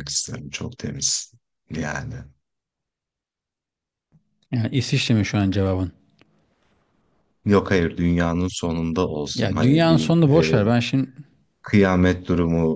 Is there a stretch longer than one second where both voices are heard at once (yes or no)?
yes